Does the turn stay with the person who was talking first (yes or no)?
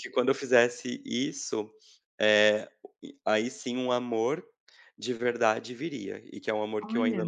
yes